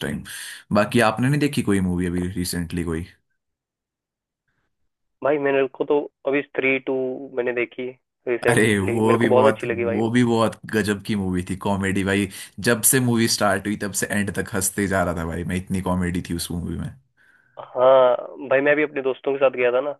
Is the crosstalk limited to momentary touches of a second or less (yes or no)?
no